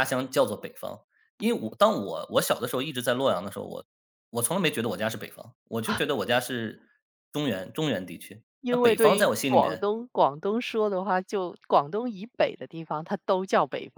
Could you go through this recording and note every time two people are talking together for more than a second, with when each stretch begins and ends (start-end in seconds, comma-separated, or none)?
8.6-9.9